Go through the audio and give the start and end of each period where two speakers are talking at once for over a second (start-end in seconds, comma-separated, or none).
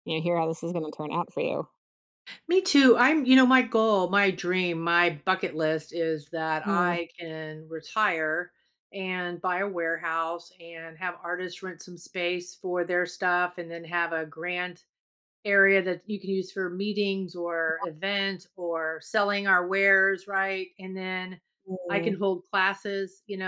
none